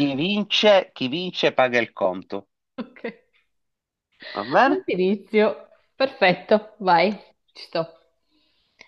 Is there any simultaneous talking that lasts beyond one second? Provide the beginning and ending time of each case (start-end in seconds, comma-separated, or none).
none